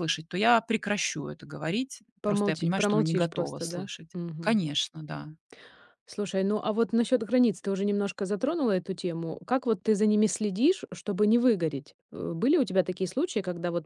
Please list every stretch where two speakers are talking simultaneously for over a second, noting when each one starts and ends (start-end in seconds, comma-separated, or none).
2.2-4.6